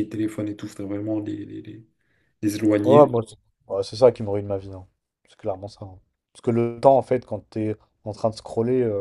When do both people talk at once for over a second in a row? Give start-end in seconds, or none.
none